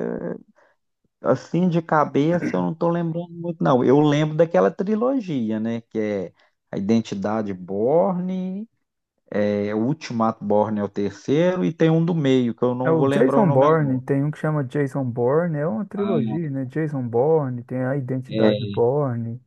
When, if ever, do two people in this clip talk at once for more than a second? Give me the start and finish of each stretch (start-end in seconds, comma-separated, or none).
12.8-14.1